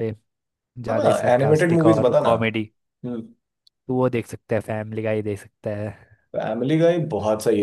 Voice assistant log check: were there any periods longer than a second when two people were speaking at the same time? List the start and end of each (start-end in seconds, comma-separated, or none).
0.9-2.3